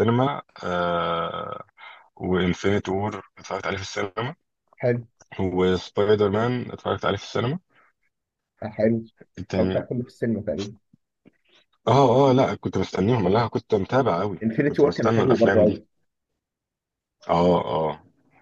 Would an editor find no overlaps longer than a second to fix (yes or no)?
no